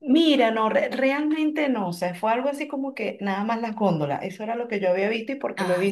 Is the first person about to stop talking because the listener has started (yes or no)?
no